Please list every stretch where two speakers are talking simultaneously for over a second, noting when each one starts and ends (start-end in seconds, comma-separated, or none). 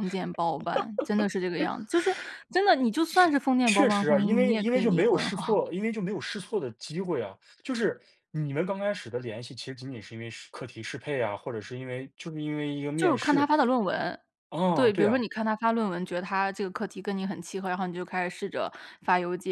3.6-5.6